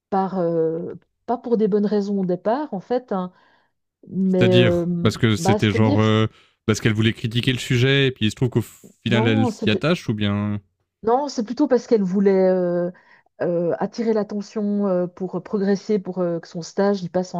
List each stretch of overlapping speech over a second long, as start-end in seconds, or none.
4.3-6.0